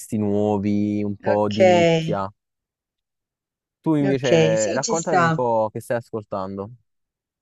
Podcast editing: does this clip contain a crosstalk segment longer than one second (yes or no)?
yes